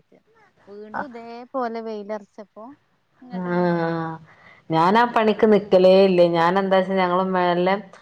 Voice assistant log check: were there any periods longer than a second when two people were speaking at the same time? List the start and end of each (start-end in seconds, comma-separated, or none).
none